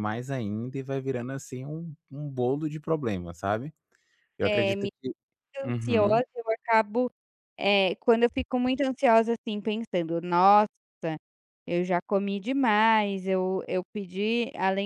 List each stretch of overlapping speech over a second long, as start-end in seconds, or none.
none